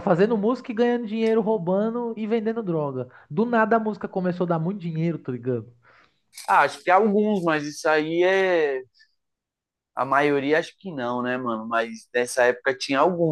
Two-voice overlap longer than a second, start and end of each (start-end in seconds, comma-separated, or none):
none